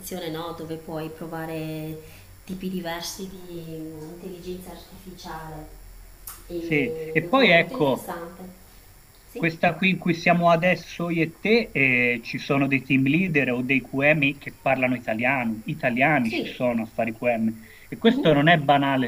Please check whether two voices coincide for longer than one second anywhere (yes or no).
yes